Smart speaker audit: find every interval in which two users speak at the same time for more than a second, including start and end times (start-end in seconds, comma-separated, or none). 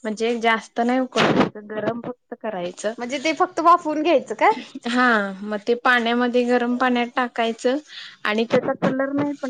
none